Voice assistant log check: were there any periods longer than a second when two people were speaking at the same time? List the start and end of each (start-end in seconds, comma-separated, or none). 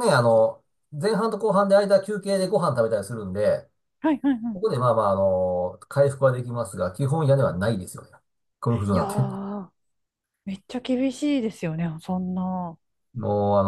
none